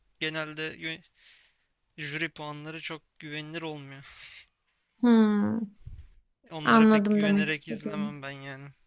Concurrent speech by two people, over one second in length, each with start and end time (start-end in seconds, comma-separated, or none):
6.6-8.1